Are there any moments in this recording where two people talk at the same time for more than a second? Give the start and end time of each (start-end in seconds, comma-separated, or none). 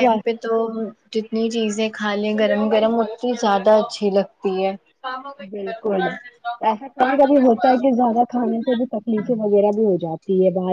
none